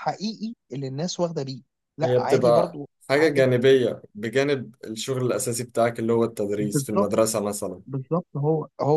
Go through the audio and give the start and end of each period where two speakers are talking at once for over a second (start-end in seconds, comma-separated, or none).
2.0-3.5